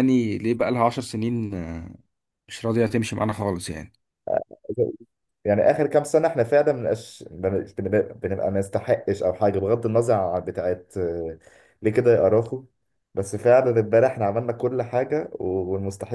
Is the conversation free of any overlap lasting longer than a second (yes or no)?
yes